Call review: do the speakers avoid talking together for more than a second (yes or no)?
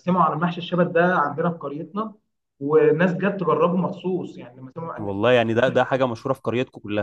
yes